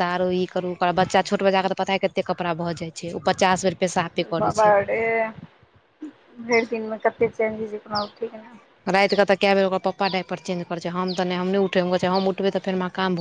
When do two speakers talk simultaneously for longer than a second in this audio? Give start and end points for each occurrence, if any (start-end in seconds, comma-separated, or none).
none